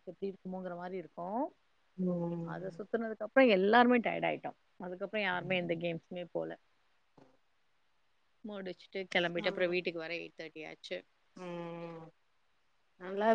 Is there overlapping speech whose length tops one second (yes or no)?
no